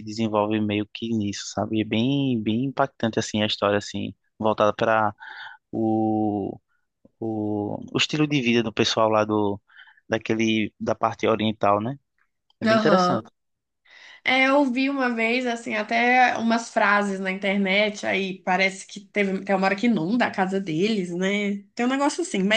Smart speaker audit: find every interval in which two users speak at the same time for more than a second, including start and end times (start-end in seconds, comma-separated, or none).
none